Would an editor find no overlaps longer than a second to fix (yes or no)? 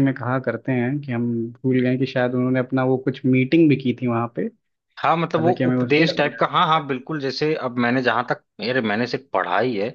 no